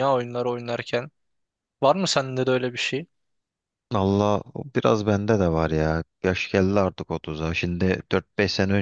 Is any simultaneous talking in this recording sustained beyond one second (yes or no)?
no